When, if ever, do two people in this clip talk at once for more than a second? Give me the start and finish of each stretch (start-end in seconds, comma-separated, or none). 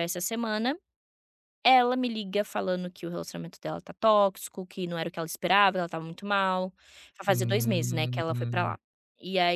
7.3-8.8